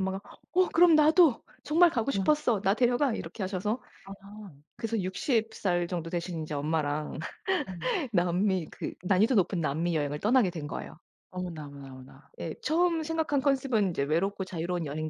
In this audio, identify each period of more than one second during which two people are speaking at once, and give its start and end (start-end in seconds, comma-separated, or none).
none